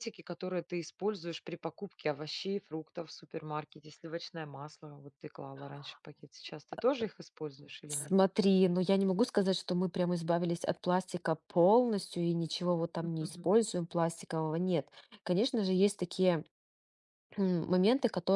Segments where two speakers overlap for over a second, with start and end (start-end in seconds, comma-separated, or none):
none